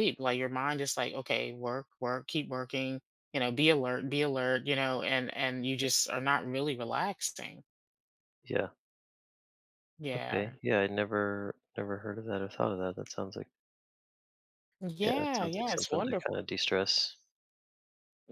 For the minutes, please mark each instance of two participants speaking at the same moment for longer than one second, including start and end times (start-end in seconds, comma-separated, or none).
15.0-16.4